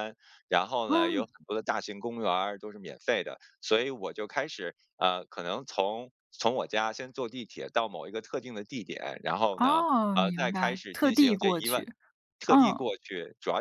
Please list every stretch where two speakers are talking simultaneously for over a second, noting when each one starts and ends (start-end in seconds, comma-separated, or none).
9.6-11.8